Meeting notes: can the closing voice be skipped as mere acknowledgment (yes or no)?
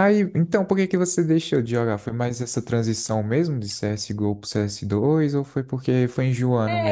no